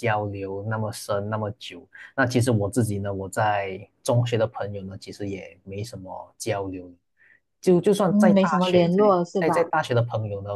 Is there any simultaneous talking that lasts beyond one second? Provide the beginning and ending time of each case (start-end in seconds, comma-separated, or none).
8.1-9.7